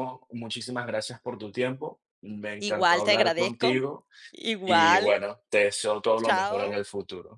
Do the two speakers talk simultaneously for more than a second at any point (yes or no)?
yes